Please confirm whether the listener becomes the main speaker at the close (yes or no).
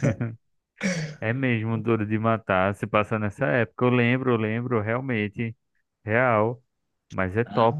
no